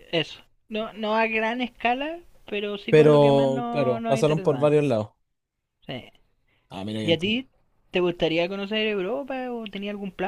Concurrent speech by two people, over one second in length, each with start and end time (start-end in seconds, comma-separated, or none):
2.9-4.8